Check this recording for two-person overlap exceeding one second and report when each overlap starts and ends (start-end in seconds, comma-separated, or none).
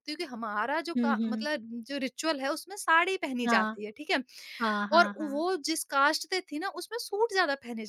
none